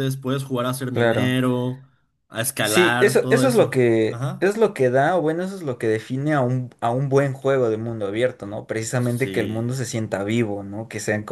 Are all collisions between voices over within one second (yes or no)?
no